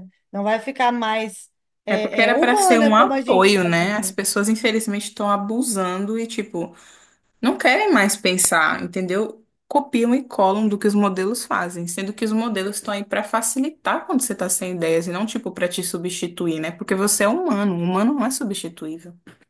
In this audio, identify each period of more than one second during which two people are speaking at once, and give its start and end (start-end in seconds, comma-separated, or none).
1.9-4.1